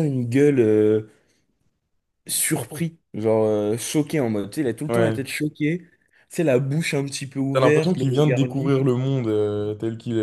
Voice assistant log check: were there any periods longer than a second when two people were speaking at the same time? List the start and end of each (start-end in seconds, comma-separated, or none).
7.5-8.7